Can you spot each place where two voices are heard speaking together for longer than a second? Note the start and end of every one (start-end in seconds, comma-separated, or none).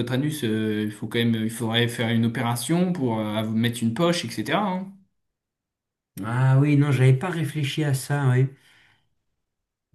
none